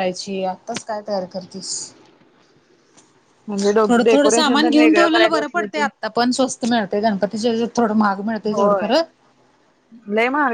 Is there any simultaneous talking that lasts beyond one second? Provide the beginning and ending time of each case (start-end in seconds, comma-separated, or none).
3.9-5.8